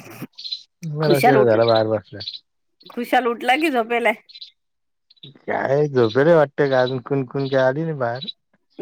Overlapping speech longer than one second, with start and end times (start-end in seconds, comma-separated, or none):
none